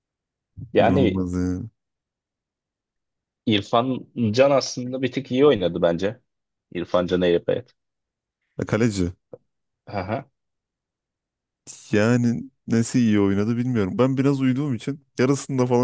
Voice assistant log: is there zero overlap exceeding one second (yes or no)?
yes